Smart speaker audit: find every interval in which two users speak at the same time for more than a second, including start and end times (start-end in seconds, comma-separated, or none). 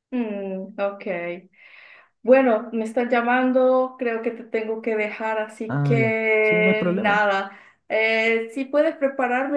5.7-7.2